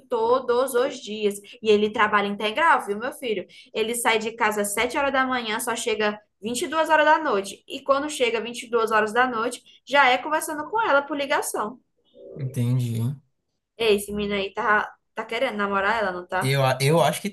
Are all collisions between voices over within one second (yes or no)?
yes